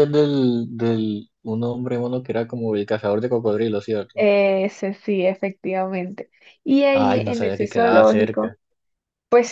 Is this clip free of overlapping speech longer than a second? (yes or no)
no